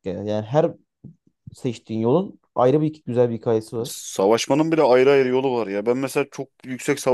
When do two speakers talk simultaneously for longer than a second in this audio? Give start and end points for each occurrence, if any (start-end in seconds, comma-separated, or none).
none